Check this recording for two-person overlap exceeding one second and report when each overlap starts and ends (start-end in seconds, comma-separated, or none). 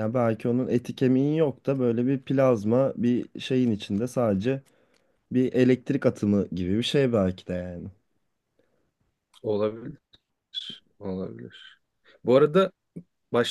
none